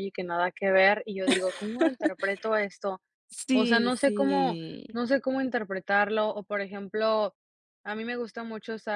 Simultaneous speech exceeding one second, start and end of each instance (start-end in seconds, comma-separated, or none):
3.5-4.9